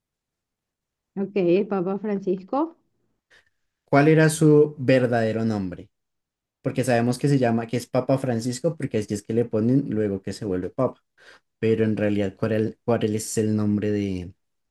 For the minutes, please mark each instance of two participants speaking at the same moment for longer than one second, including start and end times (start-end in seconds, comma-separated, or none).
none